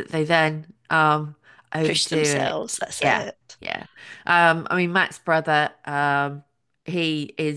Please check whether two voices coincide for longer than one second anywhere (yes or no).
yes